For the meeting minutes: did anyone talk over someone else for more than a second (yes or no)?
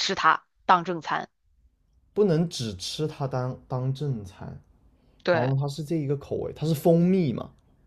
no